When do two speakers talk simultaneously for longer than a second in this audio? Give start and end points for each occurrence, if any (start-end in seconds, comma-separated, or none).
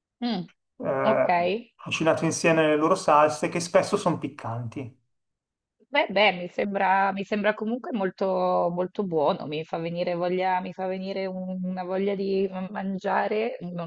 none